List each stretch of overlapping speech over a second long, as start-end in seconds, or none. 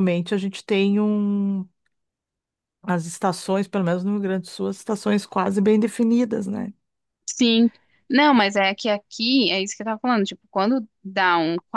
none